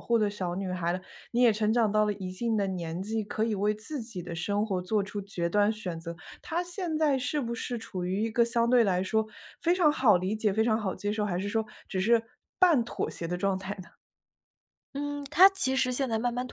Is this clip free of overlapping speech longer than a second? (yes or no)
yes